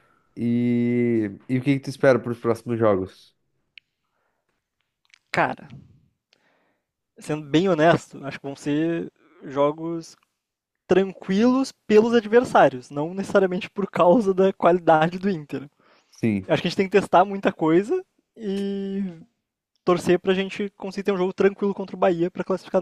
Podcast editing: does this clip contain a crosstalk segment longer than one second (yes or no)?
no